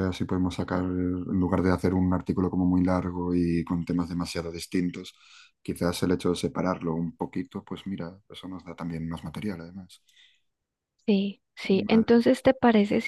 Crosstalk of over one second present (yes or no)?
no